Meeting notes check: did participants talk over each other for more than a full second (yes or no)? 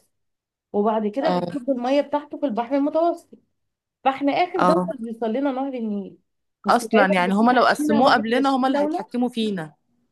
yes